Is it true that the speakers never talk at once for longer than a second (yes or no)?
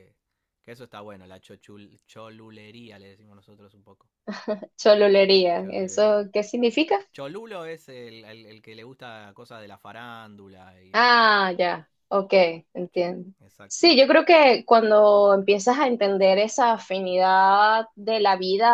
yes